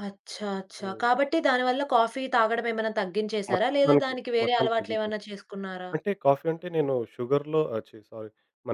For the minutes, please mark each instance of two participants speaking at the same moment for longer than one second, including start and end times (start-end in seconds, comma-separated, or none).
3.5-5.2